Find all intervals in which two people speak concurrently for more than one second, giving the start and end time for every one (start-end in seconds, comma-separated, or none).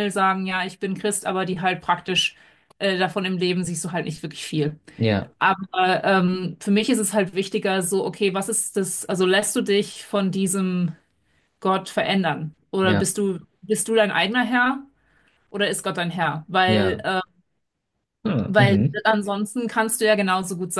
none